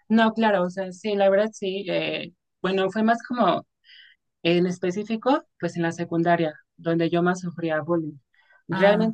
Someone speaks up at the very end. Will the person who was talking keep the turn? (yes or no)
yes